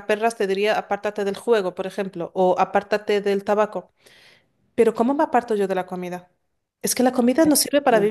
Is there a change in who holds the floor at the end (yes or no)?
no